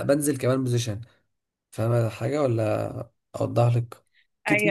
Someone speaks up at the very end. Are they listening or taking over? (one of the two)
taking over